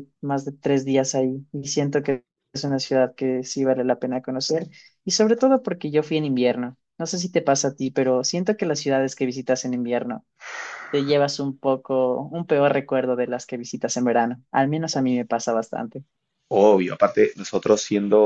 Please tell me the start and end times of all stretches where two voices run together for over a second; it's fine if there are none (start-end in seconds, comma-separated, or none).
none